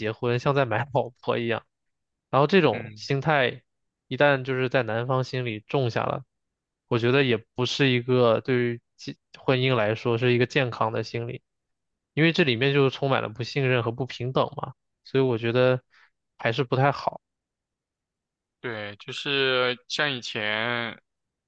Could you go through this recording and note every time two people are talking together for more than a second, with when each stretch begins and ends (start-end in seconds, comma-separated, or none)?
none